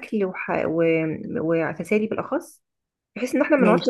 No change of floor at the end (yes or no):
yes